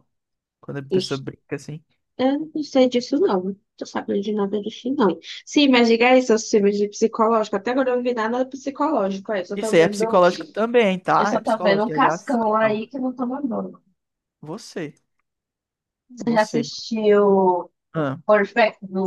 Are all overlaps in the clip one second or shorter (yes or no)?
no